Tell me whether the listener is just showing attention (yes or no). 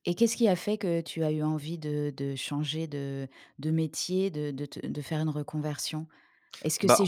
yes